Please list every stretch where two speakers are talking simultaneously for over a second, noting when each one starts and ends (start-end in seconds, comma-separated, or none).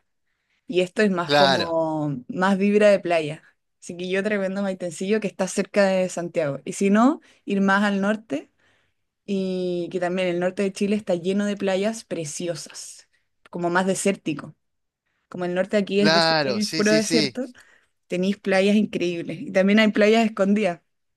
16.0-17.4